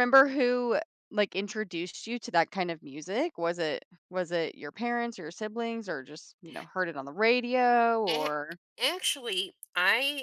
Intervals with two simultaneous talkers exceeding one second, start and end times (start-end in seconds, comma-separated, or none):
none